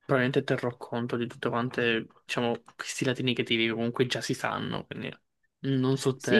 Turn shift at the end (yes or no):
yes